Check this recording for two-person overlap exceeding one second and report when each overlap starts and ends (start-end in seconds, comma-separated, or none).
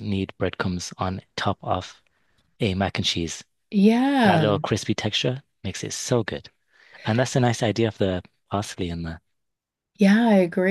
none